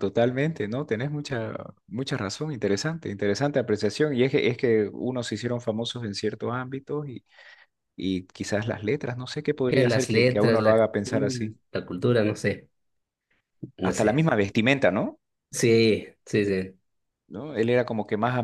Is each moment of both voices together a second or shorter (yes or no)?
no